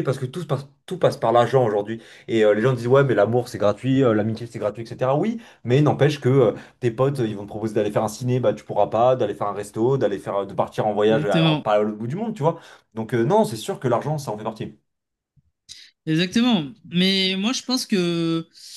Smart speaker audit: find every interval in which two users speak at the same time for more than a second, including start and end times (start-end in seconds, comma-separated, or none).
none